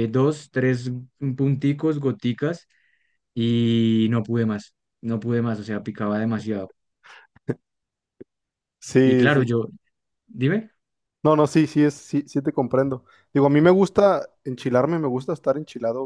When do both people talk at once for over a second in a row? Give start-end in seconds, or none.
none